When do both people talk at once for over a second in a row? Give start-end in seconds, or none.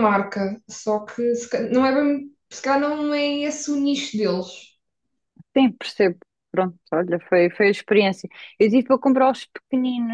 none